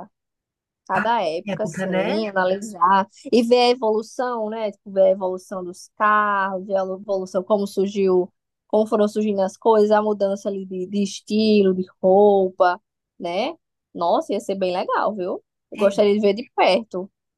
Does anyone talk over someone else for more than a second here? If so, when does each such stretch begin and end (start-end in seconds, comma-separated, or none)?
0.9-2.3